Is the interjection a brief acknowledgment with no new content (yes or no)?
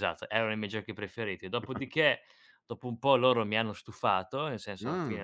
yes